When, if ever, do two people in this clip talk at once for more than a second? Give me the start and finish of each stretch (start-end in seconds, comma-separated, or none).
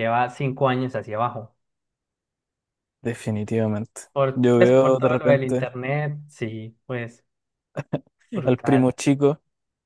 4.1-5.7